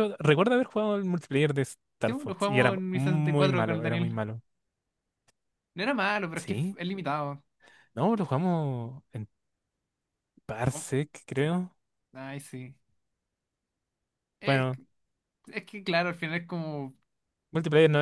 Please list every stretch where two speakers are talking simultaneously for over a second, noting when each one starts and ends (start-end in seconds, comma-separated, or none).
2.0-4.2